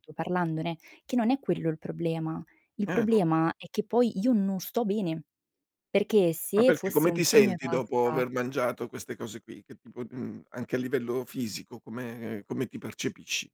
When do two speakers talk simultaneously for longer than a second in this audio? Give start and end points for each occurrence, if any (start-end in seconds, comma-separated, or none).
6.5-8.2